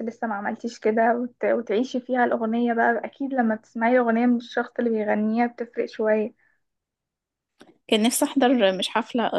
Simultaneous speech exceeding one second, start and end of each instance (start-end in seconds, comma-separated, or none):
none